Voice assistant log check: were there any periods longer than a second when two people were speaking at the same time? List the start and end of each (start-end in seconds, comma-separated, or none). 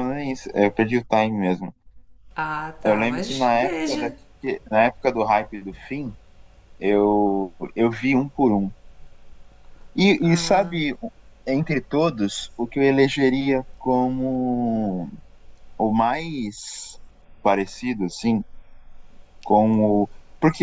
2.8-4.2